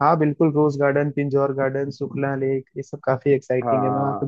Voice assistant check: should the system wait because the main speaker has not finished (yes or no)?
no